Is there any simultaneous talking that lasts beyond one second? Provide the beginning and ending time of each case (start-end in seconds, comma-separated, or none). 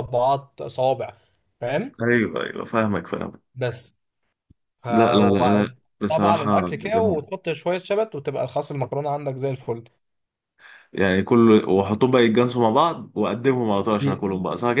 4.9-7.2